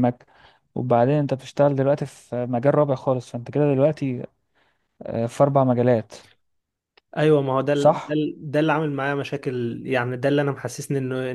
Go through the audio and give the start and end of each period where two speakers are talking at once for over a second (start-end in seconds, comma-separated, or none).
none